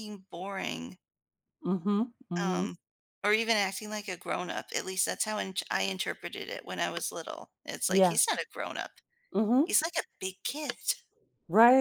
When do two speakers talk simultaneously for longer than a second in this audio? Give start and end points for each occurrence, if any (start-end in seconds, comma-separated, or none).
none